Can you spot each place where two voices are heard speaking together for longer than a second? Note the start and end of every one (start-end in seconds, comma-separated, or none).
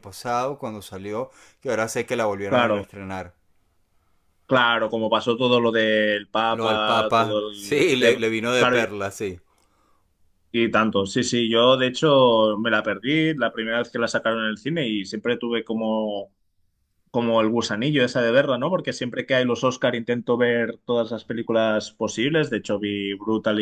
6.5-8.9